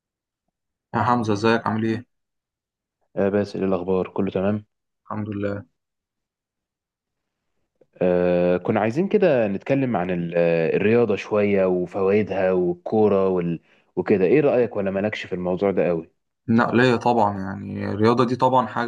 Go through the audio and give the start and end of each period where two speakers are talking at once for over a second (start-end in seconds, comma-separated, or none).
none